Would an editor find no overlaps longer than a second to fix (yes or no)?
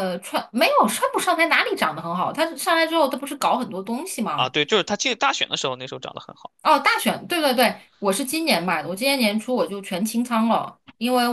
yes